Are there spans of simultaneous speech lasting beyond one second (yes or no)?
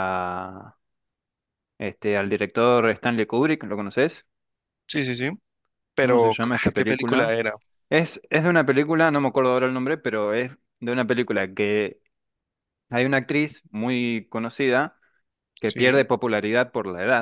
yes